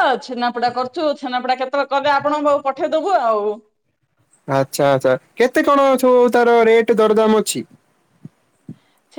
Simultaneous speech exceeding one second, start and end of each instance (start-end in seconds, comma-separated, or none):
none